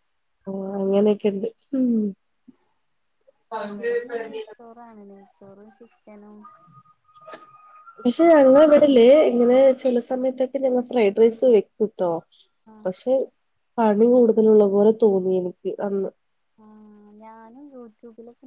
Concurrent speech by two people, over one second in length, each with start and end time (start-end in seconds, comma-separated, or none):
none